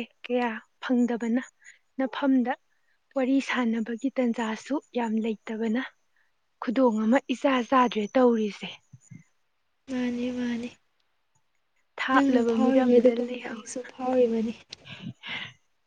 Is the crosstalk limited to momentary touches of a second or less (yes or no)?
no